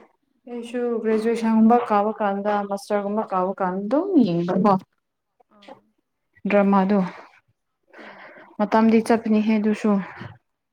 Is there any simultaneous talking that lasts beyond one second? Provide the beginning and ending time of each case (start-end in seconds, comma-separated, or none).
0.5-2.3